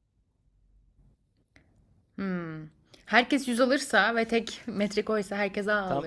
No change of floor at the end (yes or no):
no